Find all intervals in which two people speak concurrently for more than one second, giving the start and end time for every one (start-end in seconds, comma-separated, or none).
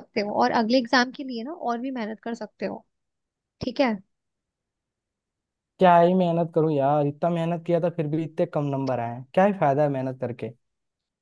none